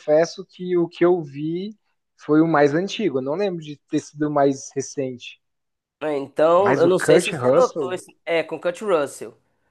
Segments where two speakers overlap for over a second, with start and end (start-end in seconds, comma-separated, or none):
6.5-7.9